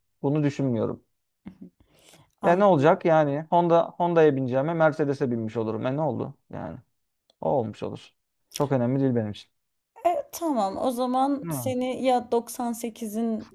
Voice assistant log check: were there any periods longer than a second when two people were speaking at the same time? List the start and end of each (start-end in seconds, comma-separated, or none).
none